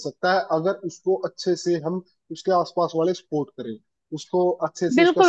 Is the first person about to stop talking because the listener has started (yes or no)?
yes